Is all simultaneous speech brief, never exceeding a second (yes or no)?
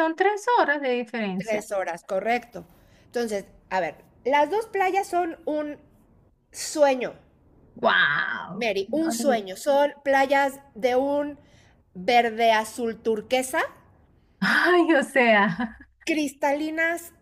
yes